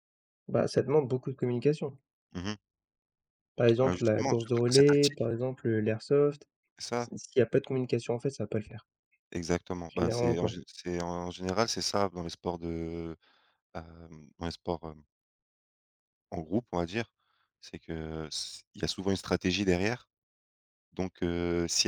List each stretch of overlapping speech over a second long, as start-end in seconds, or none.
3.8-5.3